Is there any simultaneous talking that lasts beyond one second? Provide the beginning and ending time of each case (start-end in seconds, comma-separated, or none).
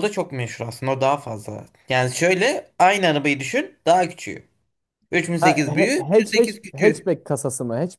5.4-7.0